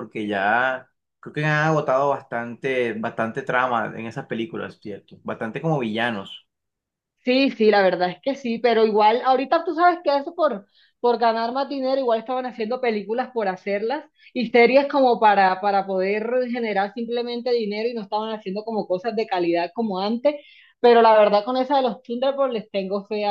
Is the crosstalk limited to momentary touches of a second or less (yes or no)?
yes